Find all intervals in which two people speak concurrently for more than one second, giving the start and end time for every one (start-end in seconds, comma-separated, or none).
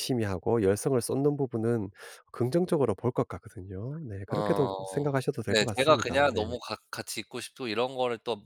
4.3-6.4